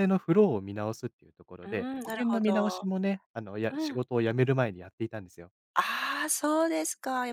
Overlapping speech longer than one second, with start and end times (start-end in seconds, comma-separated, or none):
1.7-2.9